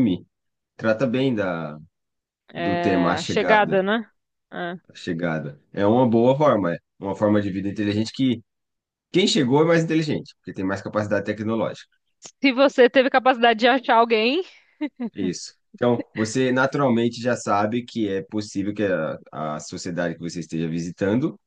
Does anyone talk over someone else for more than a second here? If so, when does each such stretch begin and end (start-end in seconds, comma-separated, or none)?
2.5-3.9